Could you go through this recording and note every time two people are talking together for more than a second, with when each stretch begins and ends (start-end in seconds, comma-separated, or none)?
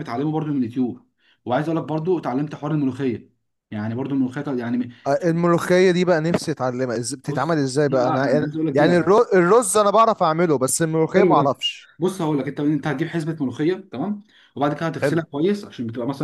7.3-9.1